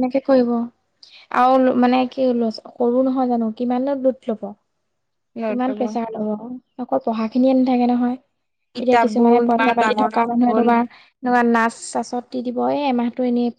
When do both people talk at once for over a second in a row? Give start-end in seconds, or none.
8.8-10.7